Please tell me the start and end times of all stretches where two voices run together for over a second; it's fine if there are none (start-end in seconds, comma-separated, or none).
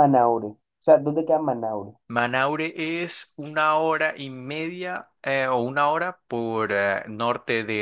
none